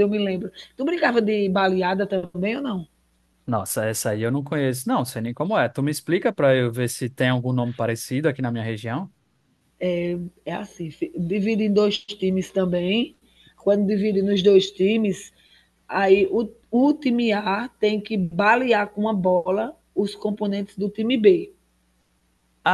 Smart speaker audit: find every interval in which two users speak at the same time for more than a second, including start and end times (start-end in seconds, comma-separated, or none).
none